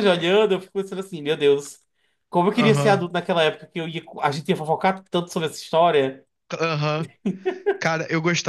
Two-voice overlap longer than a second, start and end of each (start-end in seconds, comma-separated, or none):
none